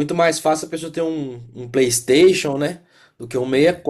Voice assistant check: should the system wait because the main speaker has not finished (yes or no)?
yes